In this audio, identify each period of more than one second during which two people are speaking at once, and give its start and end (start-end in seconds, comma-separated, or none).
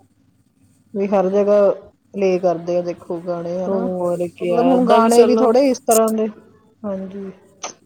3.7-5.5